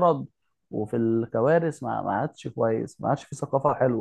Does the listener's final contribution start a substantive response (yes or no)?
yes